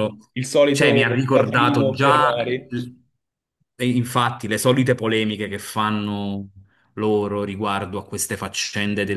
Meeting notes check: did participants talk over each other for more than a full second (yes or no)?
yes